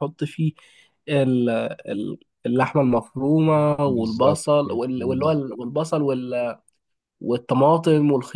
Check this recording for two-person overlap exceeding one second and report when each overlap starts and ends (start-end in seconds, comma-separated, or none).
3.9-5.4